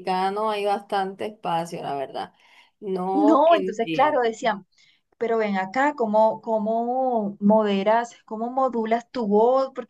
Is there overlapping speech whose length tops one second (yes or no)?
yes